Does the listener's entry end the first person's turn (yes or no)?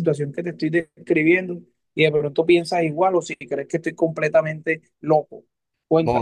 yes